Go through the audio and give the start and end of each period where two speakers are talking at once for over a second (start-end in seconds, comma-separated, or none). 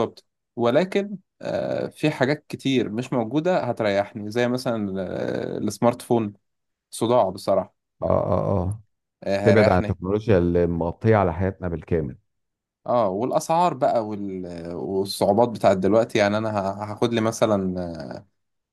none